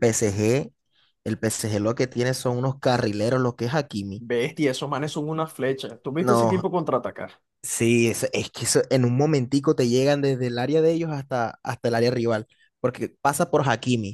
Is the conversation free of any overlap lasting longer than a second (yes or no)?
yes